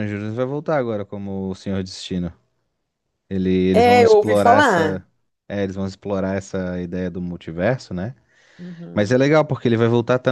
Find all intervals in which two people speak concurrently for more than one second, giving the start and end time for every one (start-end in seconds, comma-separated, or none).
3.7-5.0